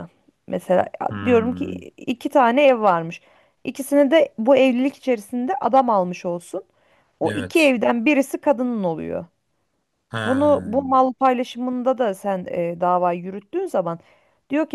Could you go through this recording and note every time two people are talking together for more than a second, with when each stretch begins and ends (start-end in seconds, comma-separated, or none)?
none